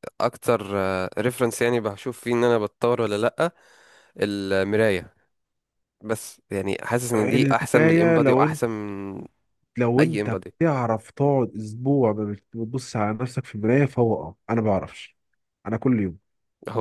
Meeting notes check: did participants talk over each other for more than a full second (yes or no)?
yes